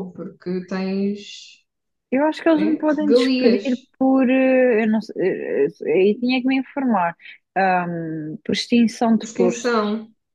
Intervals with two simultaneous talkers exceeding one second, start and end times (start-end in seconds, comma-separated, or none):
2.5-3.9